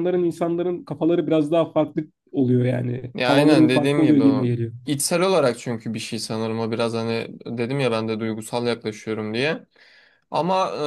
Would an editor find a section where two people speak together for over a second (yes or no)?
yes